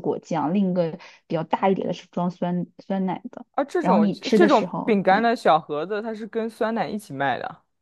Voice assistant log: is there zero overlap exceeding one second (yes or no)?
no